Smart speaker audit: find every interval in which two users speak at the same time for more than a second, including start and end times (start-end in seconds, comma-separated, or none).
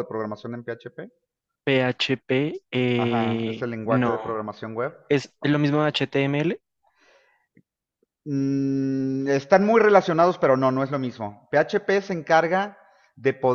3.0-4.5